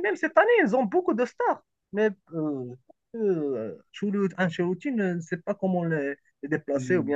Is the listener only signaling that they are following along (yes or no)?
yes